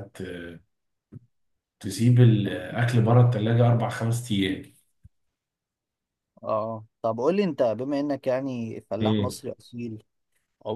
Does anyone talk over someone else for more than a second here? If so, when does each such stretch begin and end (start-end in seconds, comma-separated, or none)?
none